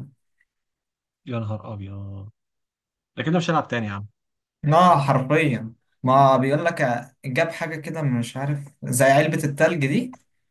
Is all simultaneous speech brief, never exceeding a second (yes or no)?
yes